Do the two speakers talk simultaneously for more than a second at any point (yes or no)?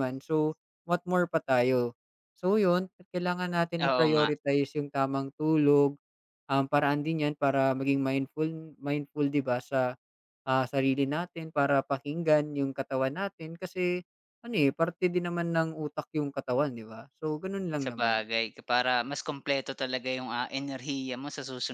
no